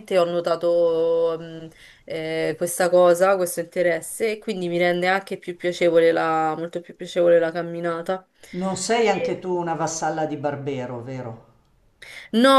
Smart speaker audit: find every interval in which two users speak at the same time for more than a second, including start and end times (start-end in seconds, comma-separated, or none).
none